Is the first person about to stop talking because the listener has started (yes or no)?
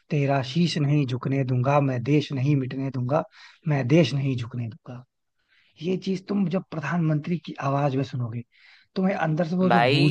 yes